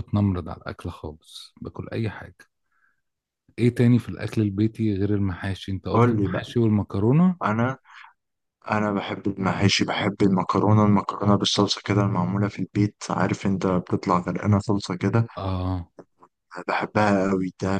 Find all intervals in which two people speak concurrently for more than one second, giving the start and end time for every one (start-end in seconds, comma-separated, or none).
none